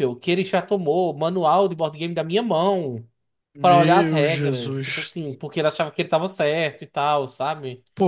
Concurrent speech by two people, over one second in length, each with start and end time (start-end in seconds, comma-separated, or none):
3.6-5.2